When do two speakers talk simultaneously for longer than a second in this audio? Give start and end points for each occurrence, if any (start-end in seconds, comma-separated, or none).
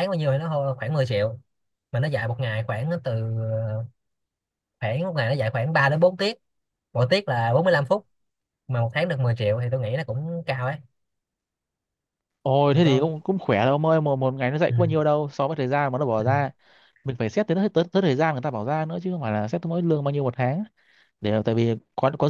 none